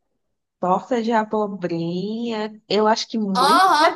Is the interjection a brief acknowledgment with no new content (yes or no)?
no